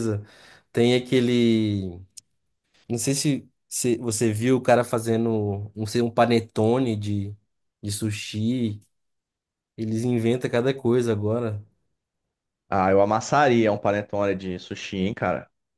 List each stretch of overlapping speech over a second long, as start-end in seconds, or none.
none